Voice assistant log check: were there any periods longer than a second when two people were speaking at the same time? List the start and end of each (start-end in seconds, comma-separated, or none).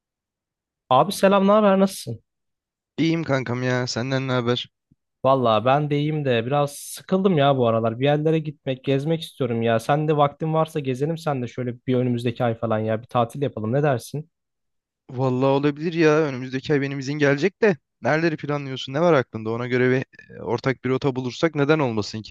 none